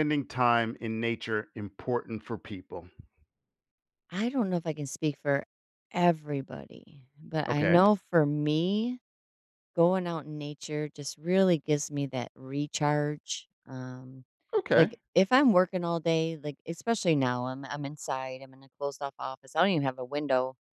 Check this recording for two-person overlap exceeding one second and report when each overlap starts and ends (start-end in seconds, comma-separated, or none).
none